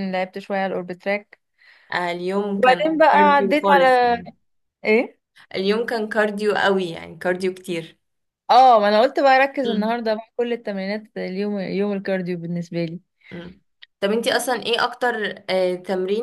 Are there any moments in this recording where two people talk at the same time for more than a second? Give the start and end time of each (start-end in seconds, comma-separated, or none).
2.6-4.2